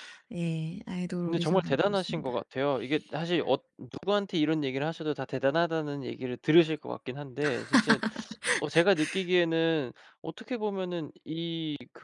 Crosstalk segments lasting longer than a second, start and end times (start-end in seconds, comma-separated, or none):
1.2-2.5